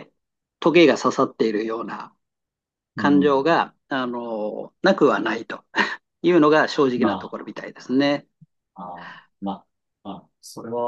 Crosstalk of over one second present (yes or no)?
no